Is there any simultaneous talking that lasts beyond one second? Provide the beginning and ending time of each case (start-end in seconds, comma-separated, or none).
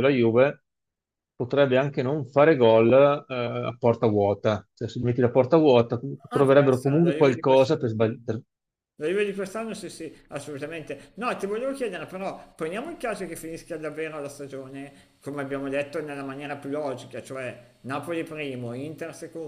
6.3-7.8